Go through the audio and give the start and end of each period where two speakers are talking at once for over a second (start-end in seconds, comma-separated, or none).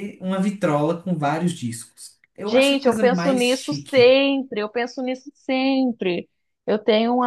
2.5-4.2